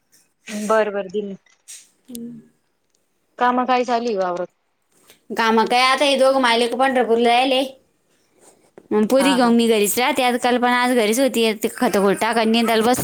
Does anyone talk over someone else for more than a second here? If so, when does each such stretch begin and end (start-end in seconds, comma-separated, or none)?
none